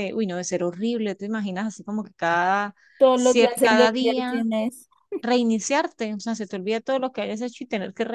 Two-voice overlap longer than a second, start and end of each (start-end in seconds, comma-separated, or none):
3.1-4.4